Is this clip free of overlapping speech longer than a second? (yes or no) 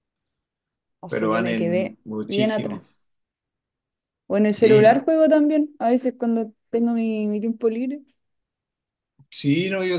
no